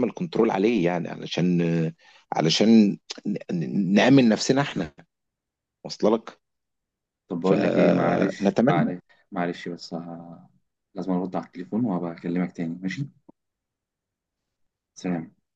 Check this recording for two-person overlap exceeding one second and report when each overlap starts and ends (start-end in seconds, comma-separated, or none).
7.4-8.9